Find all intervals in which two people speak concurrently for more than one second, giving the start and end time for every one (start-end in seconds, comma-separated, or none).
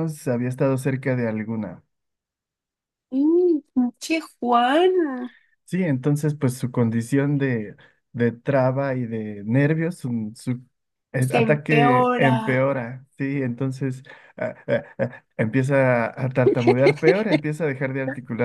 11.2-12.6